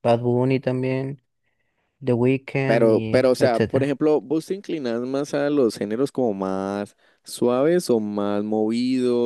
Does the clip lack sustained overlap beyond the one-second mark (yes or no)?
no